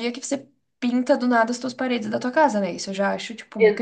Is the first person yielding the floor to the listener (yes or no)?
yes